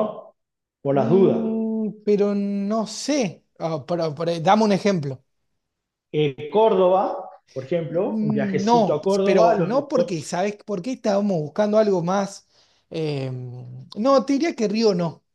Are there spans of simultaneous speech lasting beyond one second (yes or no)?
yes